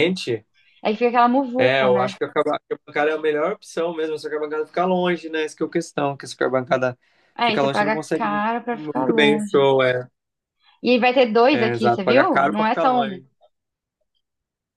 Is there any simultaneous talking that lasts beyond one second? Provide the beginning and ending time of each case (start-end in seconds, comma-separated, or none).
7.4-9.7, 11.5-13.2